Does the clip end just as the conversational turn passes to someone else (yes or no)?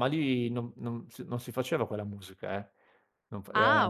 no